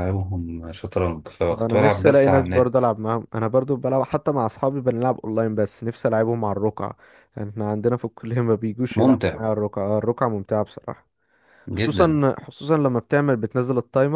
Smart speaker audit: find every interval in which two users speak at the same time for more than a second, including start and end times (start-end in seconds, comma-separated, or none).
1.5-2.8